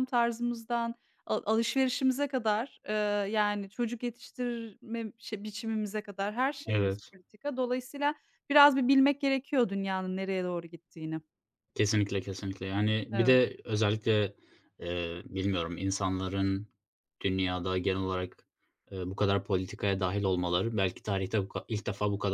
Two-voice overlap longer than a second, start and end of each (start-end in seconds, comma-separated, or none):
none